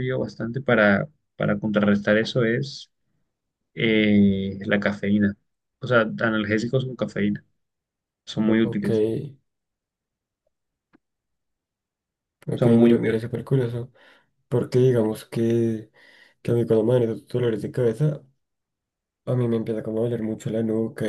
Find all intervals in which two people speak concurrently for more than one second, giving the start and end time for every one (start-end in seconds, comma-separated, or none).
none